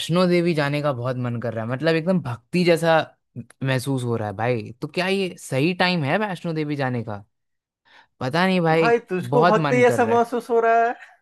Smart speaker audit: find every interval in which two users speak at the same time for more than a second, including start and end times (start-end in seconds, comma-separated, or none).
8.7-10.3